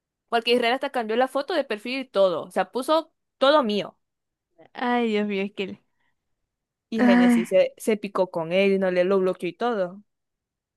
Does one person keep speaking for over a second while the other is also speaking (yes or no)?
no